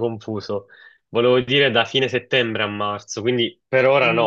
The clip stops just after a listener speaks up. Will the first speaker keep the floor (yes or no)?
no